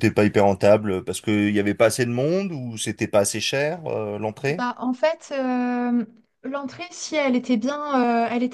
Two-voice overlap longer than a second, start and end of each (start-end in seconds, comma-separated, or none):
none